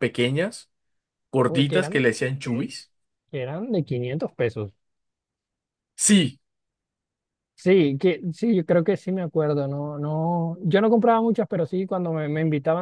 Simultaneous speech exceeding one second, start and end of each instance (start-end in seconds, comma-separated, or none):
none